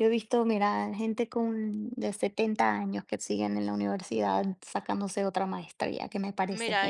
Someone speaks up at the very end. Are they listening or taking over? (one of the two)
taking over